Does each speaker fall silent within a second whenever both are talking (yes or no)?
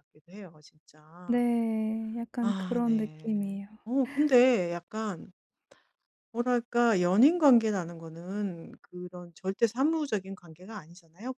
no